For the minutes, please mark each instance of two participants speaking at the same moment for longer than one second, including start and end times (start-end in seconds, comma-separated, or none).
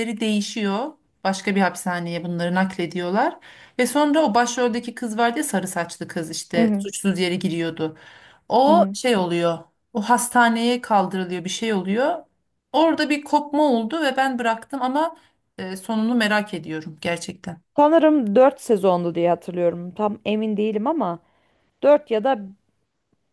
none